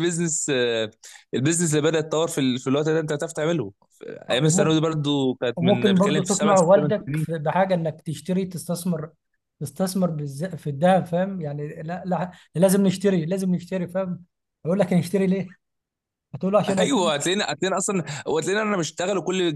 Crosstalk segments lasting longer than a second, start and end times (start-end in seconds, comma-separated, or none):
5.5-7.3